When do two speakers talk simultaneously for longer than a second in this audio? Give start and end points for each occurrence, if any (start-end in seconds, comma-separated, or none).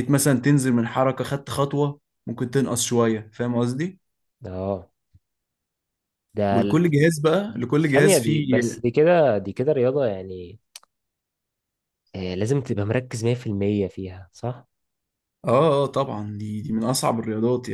7.5-8.8